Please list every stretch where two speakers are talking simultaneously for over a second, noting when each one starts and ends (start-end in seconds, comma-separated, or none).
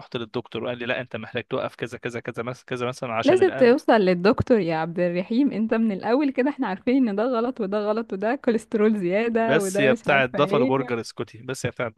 9.4-10.9